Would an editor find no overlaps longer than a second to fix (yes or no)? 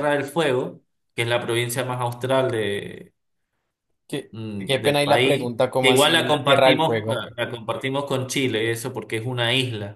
no